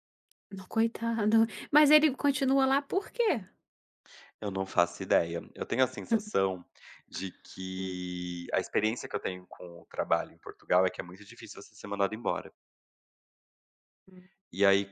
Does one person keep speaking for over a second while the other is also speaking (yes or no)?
no